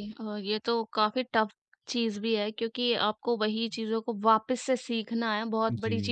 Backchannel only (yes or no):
yes